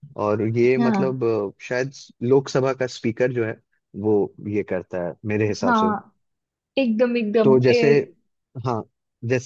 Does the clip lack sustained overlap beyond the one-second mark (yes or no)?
yes